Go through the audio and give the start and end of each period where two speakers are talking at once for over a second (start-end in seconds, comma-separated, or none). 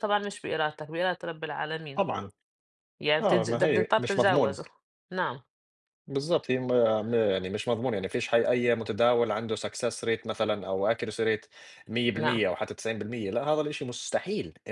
3.2-4.6